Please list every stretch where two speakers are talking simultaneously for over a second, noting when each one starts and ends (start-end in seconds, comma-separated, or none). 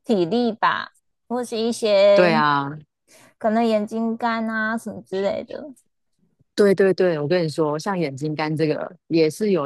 none